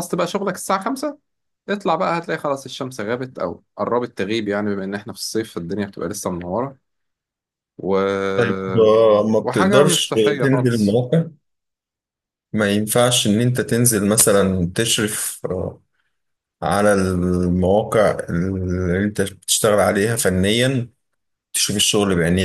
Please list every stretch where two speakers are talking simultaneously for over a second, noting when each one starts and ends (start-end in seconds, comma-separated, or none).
9.4-11.0